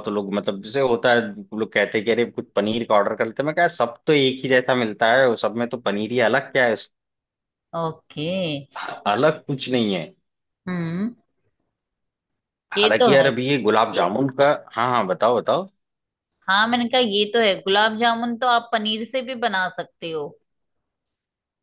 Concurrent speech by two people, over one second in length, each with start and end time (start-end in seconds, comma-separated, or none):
none